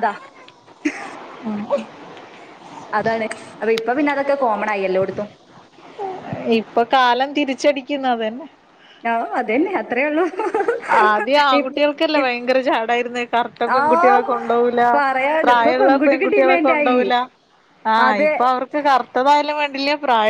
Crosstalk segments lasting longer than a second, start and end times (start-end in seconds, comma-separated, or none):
15.4-17.0